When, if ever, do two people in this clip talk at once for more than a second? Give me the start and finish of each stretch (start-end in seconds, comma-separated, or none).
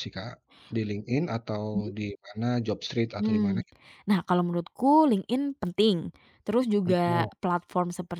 none